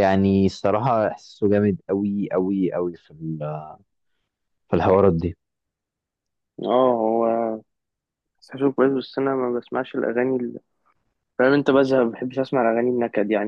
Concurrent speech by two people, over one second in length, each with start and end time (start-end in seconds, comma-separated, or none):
none